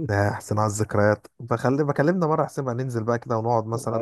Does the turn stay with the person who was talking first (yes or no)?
no